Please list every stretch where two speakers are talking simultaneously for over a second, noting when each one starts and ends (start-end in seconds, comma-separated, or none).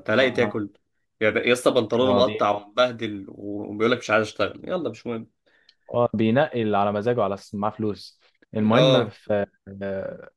none